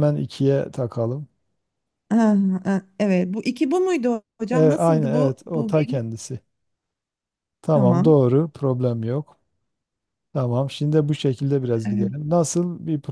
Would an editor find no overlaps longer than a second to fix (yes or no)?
no